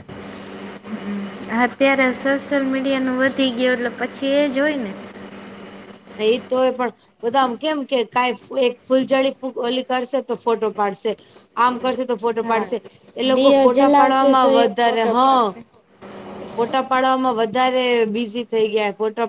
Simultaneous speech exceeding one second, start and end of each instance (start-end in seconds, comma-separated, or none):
13.4-15.4